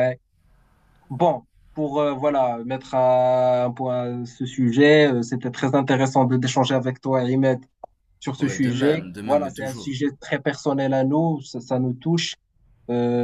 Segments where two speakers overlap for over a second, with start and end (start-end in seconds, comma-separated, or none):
8.4-10.0